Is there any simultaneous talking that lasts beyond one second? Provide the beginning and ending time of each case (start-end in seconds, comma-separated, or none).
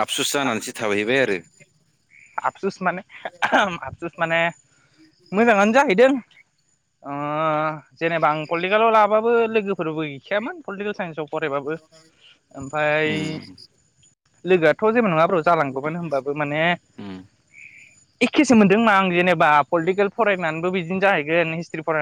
none